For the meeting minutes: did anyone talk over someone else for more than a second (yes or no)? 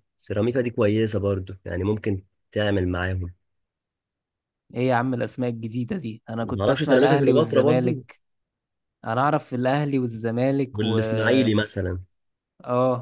yes